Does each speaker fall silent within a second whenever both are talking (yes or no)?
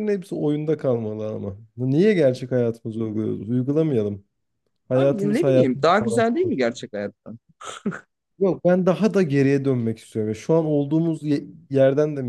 no